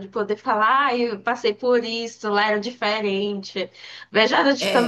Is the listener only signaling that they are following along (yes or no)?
yes